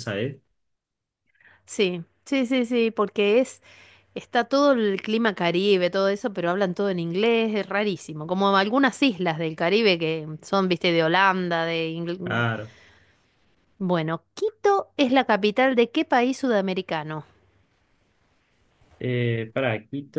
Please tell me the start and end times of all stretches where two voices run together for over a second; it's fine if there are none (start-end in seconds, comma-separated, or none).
none